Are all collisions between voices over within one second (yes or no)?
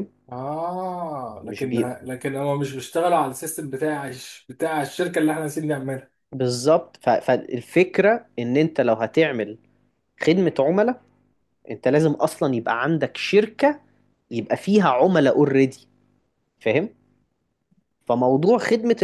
yes